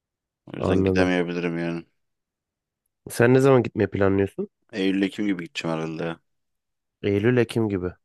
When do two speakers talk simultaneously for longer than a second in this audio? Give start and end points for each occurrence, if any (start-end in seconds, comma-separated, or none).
none